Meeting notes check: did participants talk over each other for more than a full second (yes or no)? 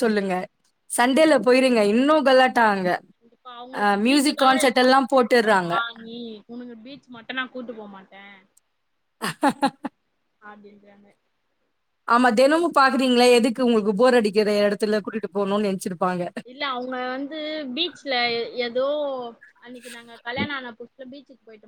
yes